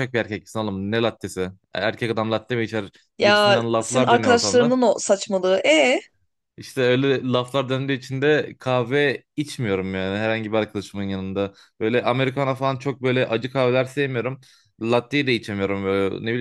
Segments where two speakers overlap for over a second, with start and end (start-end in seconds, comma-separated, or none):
3.2-4.8